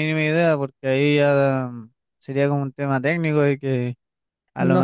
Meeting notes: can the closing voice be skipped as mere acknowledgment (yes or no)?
yes